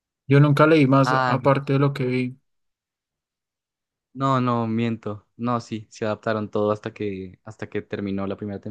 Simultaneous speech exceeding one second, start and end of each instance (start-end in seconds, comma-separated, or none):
none